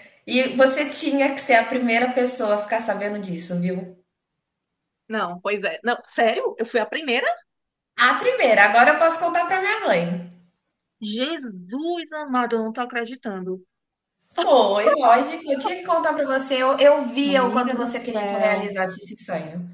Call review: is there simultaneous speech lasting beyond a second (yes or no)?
yes